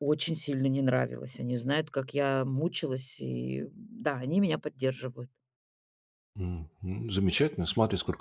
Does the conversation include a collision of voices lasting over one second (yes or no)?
no